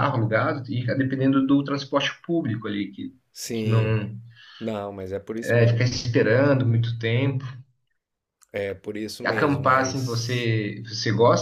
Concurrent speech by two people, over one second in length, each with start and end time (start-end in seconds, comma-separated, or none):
9.2-10.5